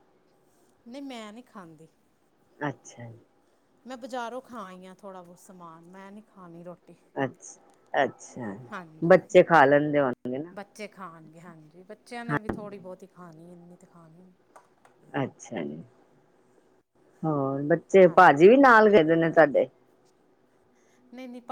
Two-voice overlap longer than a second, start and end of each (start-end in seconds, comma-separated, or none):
none